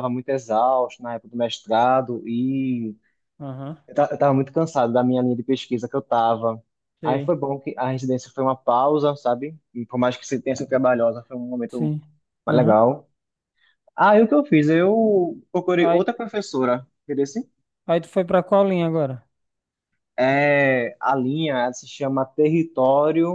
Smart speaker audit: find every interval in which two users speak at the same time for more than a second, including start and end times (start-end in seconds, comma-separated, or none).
none